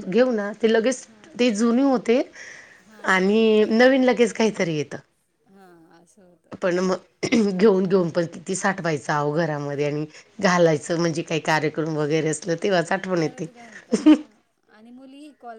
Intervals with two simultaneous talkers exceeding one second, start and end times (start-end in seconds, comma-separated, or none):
3.1-4.3